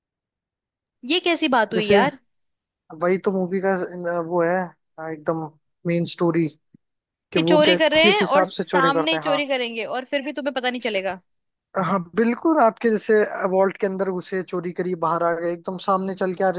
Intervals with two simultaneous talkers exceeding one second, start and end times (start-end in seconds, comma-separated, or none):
7.3-9.4